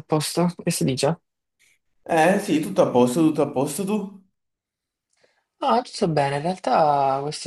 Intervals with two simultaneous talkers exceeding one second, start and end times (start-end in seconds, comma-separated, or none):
none